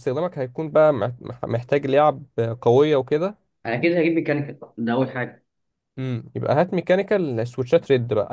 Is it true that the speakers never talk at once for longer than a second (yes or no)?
yes